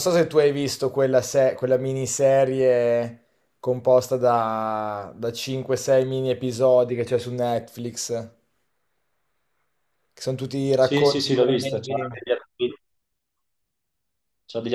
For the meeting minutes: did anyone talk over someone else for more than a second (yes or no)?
yes